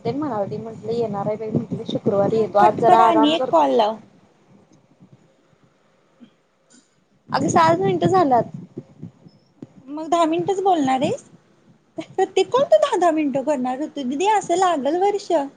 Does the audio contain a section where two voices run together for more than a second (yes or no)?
yes